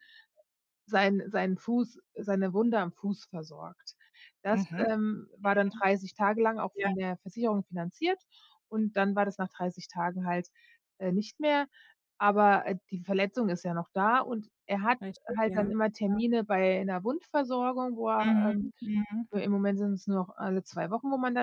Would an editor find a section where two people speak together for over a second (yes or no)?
no